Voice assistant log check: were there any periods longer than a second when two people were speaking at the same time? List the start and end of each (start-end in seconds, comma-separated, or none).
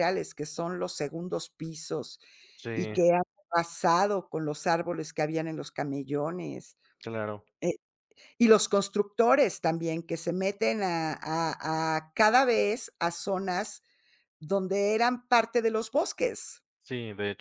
none